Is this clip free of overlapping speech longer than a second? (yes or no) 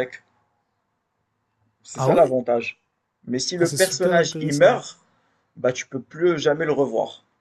no